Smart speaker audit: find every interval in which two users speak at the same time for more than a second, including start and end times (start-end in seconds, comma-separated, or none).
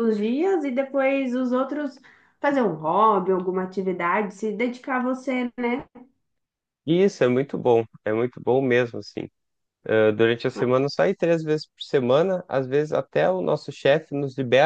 none